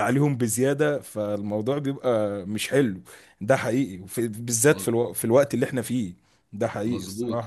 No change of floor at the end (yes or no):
no